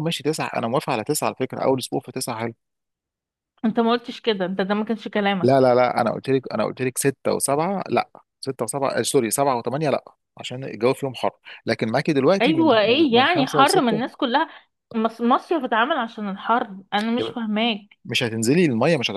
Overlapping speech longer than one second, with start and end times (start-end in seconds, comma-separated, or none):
12.4-14.1